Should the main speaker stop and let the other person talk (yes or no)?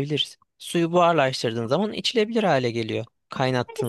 yes